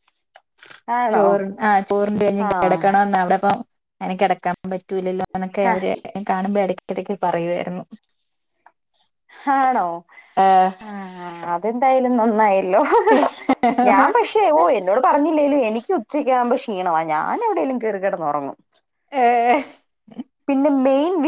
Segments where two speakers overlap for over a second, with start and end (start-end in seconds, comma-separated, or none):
none